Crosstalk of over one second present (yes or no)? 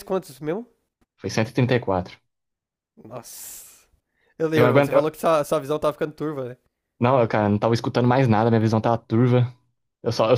no